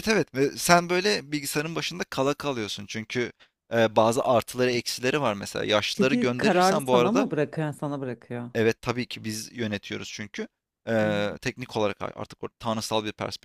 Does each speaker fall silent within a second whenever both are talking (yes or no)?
no